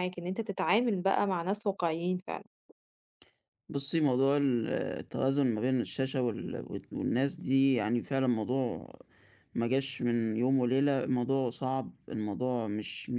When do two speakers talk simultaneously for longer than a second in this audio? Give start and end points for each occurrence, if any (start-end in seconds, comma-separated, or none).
none